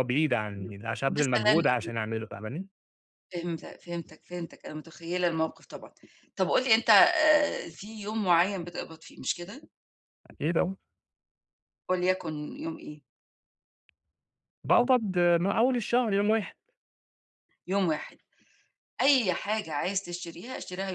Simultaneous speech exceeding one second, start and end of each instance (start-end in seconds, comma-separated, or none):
0.6-1.9